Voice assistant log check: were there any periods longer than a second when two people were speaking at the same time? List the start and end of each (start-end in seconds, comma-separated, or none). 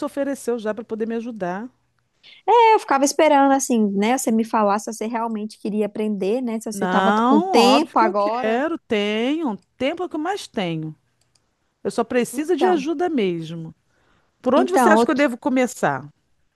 6.7-8.6